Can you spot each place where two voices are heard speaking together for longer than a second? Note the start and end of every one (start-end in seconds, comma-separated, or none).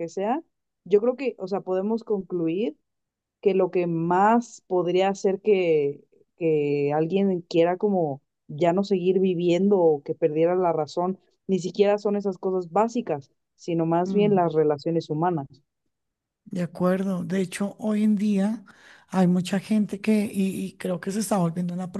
none